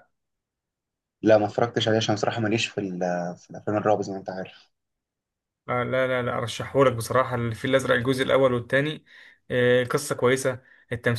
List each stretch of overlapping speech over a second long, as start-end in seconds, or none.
none